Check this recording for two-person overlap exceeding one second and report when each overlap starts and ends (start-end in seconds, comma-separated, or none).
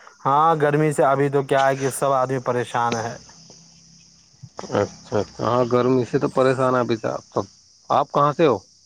none